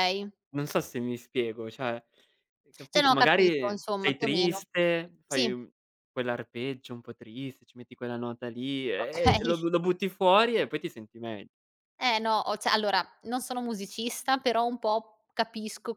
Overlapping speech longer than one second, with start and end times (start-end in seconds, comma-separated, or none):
2.9-4.6